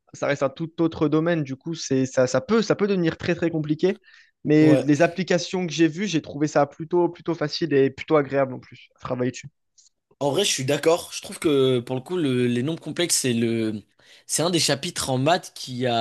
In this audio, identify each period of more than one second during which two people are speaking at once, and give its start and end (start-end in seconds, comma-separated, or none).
none